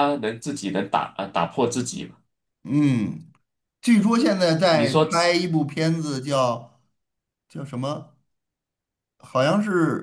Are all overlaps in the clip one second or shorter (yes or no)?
yes